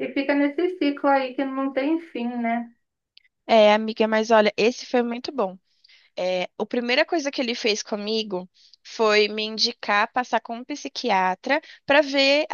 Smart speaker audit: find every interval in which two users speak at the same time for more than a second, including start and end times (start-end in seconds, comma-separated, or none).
none